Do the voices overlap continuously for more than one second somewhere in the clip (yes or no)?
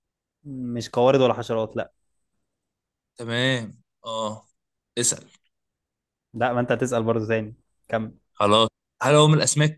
no